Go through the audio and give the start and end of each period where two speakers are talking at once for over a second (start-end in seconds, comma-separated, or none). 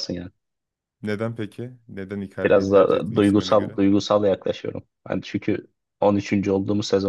2.4-3.7